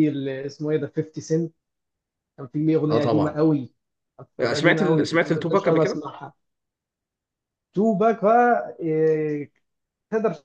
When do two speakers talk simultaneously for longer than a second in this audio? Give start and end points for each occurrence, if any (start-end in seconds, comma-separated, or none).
4.4-6.0